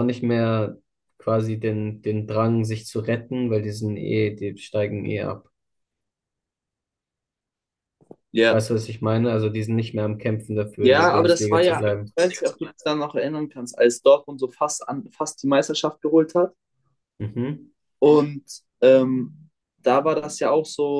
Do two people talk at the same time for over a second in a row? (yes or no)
yes